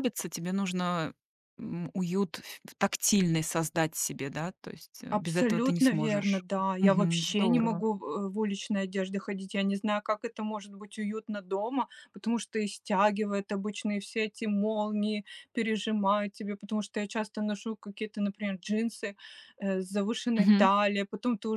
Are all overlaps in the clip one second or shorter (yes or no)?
no